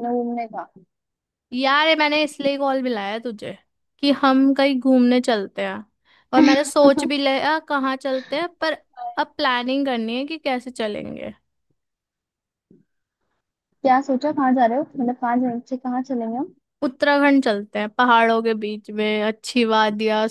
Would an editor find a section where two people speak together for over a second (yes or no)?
no